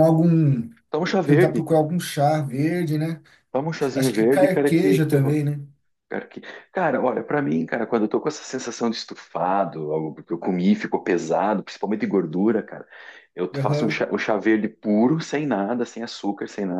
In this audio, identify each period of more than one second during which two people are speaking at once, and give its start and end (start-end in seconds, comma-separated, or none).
4.0-5.2